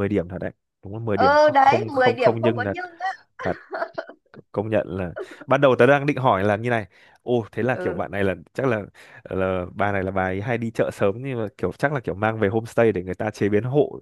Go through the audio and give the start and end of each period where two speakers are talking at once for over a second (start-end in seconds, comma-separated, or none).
1.1-2.8